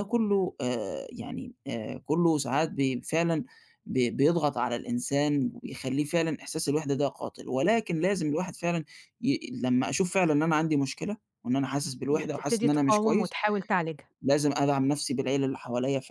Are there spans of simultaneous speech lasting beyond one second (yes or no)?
yes